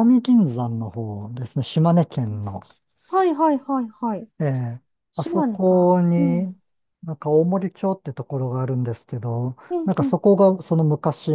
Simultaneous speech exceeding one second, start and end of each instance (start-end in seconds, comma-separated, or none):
5.2-6.6